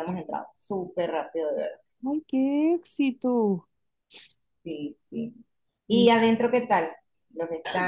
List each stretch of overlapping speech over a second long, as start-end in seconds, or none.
none